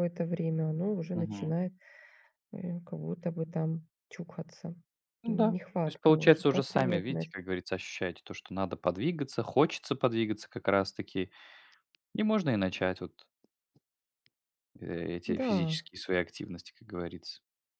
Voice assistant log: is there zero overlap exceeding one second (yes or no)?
no